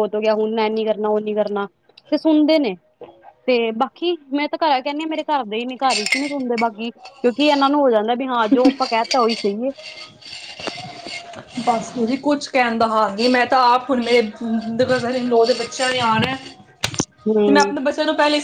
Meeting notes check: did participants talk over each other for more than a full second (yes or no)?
no